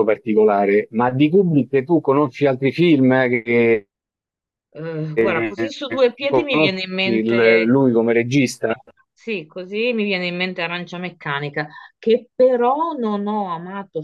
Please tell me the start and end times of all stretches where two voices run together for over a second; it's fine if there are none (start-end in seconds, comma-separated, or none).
5.1-7.8